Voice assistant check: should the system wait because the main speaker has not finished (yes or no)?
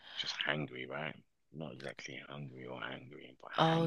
no